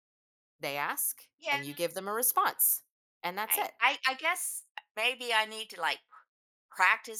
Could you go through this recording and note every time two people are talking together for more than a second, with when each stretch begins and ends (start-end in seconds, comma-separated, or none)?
none